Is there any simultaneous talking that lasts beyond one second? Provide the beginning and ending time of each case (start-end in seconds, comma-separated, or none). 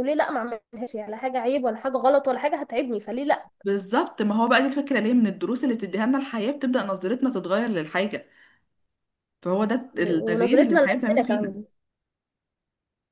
9.9-11.6